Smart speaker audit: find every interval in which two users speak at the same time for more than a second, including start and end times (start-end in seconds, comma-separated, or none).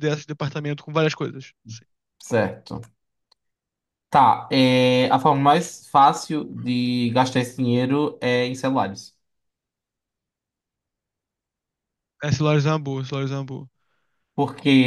none